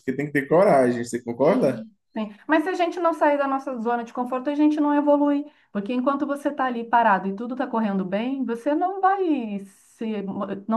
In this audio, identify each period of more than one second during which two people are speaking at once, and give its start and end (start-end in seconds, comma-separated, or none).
none